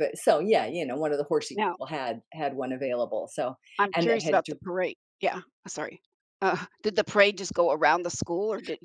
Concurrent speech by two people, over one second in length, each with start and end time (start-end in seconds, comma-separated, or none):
none